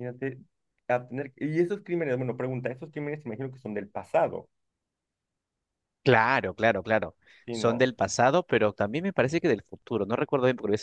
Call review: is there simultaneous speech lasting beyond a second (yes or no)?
no